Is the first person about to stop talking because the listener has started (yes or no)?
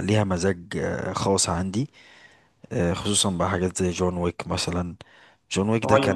no